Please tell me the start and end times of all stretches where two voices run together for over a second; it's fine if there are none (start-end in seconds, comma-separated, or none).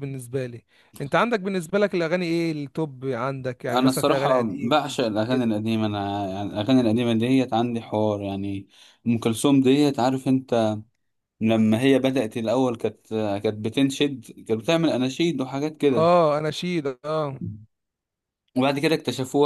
3.7-5.5